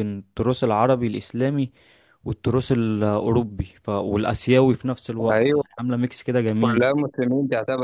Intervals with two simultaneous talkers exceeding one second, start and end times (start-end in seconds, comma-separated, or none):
none